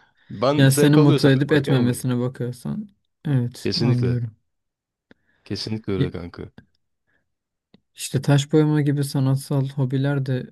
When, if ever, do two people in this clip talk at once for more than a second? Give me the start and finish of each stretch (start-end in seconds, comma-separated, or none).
0.6-2.1